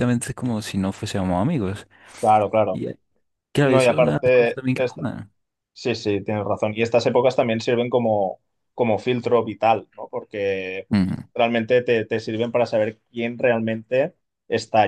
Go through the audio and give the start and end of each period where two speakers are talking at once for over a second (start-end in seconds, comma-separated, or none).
3.6-5.0